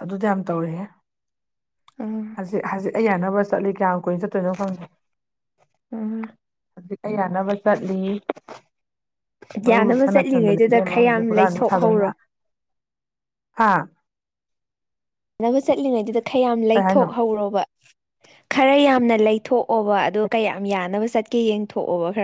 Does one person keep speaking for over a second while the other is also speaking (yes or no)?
yes